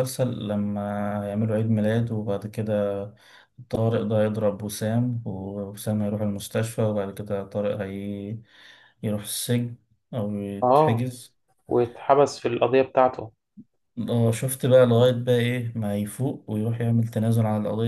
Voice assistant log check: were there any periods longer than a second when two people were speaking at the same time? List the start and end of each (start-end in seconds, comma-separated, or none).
none